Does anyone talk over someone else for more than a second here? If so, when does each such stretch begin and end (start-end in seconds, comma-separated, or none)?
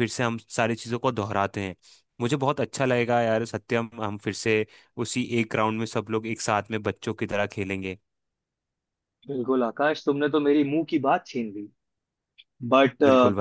none